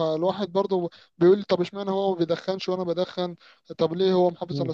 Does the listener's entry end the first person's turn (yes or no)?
no